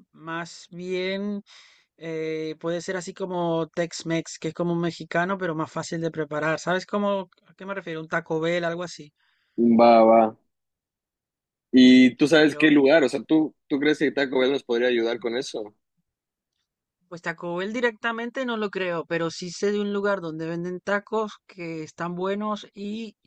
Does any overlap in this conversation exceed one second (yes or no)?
no